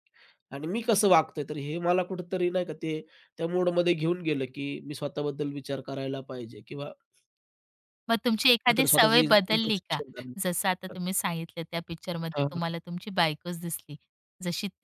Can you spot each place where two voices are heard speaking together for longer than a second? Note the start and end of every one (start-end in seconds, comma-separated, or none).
8.7-10.0